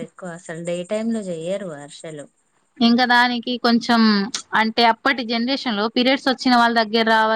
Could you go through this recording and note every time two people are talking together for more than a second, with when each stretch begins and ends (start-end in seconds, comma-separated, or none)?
none